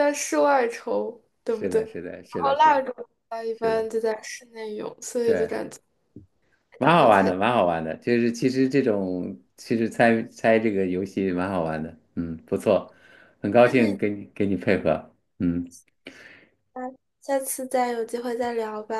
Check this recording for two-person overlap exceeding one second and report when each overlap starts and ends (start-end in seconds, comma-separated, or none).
1.5-2.8